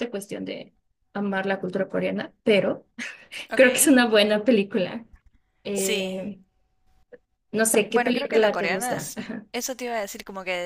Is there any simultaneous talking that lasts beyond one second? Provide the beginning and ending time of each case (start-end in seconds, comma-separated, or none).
7.9-9.1